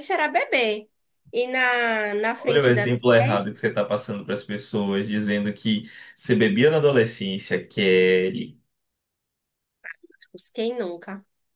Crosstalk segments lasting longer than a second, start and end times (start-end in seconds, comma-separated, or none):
2.4-3.6